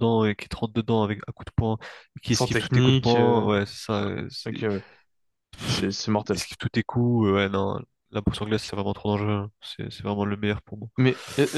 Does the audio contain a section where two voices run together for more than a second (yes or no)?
yes